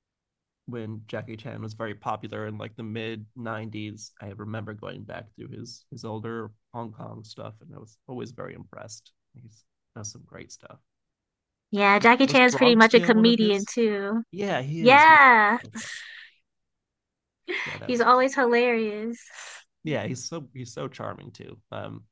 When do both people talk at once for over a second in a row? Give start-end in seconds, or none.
12.0-13.7